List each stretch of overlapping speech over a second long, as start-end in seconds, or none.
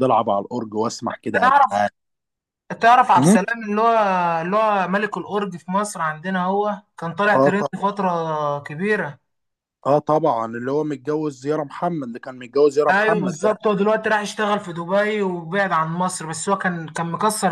none